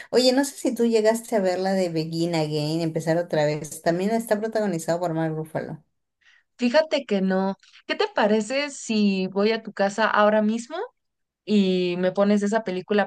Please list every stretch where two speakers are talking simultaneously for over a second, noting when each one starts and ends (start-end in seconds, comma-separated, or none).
none